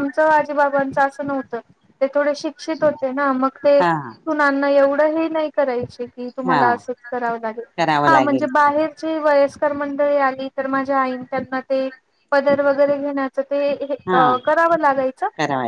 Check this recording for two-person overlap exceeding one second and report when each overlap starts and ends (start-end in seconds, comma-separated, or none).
none